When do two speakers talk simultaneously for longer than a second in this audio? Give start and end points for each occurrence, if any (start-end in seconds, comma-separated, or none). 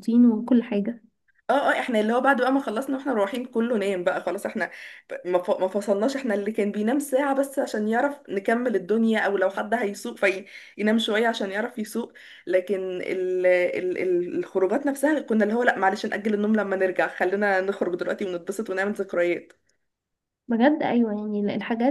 none